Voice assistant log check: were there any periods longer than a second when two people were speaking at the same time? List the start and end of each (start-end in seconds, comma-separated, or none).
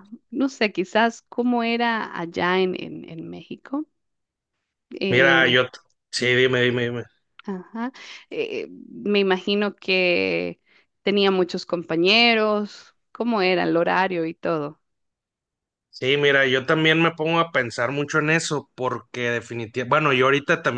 none